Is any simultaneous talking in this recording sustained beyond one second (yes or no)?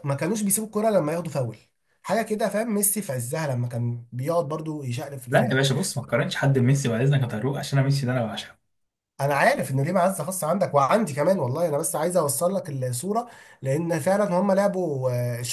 no